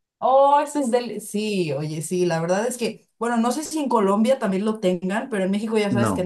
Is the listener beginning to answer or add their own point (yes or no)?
no